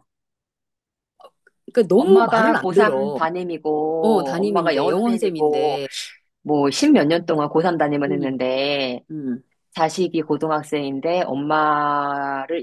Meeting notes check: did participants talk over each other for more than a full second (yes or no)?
yes